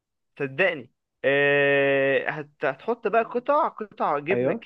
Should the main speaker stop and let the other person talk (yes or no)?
no